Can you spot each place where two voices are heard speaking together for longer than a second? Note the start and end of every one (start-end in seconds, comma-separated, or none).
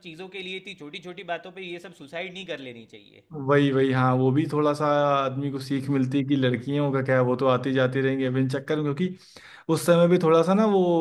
none